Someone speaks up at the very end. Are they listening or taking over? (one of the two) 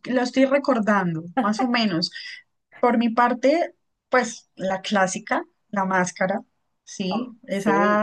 listening